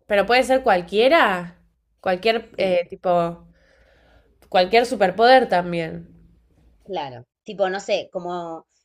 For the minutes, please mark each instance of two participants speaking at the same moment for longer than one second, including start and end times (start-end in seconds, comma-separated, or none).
none